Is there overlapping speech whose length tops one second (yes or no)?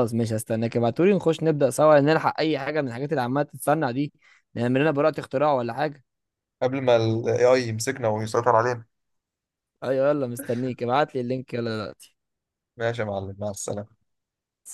no